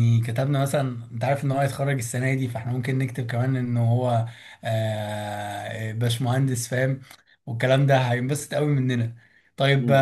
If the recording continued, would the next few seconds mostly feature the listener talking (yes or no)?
no